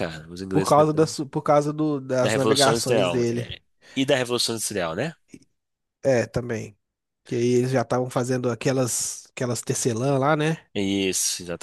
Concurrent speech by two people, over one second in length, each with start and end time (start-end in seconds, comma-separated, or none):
2.2-3.5